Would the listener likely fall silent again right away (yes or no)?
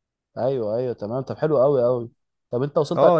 no